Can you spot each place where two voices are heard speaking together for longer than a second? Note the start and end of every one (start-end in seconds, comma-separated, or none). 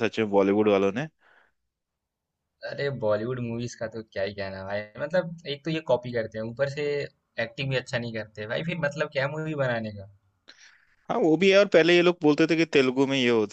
none